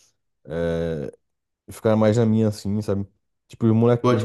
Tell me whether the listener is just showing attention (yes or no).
yes